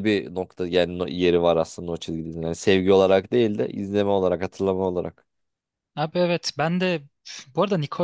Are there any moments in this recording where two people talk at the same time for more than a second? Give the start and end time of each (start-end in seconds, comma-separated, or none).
none